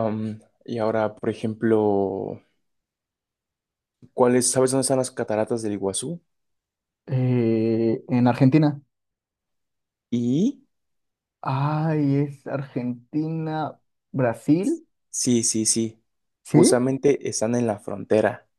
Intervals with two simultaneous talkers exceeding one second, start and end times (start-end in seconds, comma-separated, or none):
none